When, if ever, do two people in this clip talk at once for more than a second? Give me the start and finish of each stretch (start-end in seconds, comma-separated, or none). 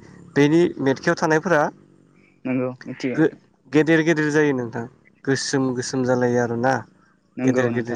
none